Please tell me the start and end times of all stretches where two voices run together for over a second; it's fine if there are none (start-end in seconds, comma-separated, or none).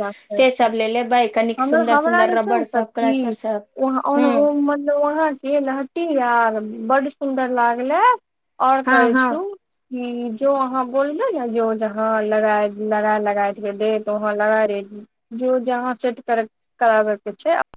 1.6-3.2